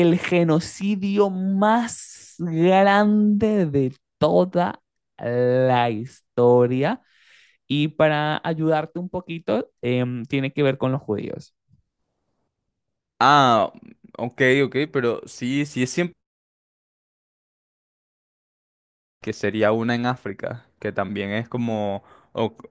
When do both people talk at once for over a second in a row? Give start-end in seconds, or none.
none